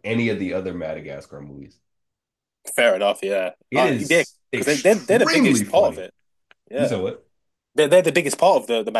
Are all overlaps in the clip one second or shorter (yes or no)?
no